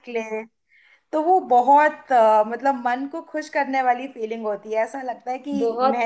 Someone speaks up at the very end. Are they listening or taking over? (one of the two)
taking over